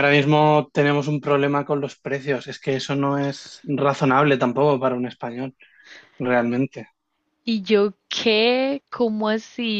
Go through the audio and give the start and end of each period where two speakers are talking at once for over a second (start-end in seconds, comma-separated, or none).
none